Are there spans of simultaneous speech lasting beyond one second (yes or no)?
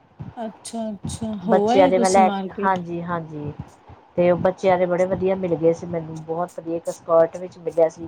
yes